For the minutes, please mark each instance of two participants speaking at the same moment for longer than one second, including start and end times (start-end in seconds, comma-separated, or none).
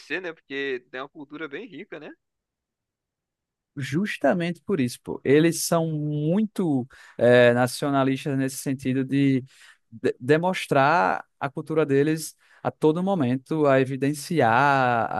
none